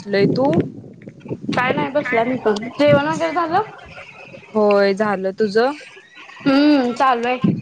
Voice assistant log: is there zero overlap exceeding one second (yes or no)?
yes